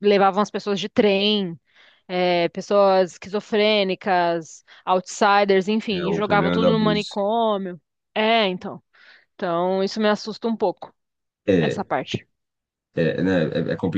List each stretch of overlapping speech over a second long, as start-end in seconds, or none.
5.9-7.2